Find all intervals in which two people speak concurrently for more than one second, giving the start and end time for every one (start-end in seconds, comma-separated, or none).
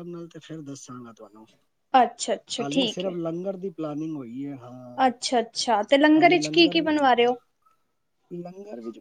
none